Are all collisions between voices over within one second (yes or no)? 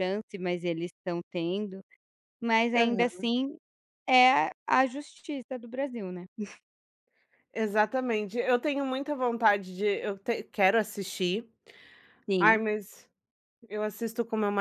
yes